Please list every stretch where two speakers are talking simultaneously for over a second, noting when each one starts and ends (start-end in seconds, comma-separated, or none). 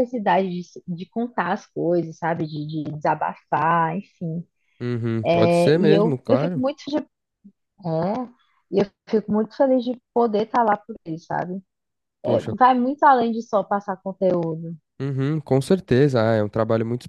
5.4-6.6